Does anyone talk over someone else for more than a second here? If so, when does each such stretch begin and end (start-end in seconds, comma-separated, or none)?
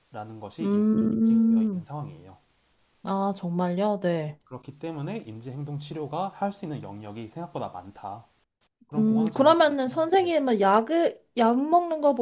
0.6-1.8